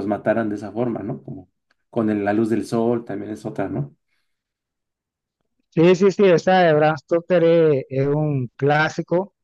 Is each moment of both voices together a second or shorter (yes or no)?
yes